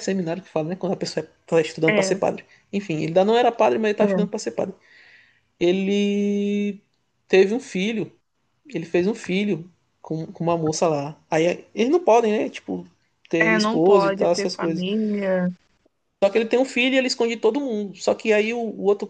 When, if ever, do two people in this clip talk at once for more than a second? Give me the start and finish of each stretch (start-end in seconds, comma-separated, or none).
13.4-14.8